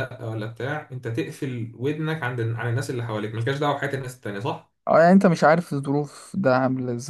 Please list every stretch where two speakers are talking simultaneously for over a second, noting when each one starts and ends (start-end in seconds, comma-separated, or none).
none